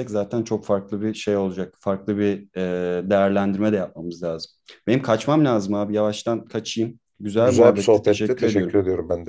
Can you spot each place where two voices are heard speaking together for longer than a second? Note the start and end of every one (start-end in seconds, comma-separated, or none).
7.4-8.8